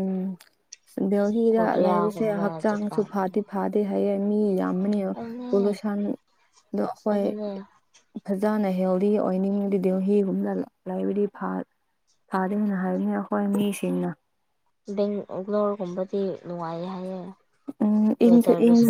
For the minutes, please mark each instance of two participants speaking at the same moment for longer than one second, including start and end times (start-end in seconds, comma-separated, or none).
1.5-3.4